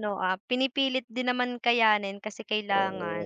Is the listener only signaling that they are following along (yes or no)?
no